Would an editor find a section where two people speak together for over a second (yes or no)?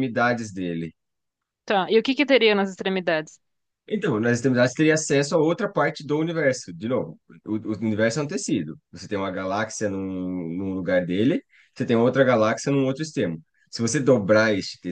no